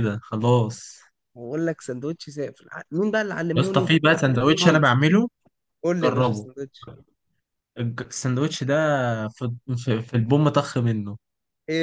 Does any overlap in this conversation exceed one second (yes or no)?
no